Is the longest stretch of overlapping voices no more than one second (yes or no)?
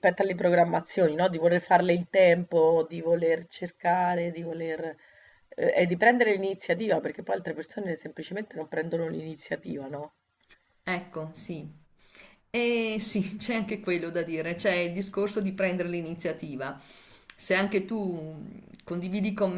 yes